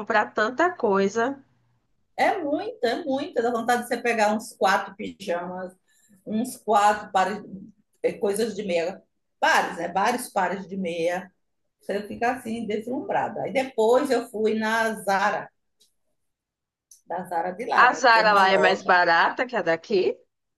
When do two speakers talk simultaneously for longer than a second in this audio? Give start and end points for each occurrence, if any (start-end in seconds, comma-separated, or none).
17.8-18.9